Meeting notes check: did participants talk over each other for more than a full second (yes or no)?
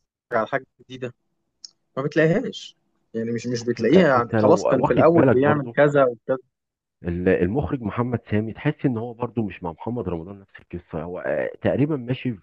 yes